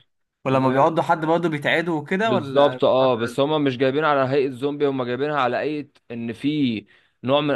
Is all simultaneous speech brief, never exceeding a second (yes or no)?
no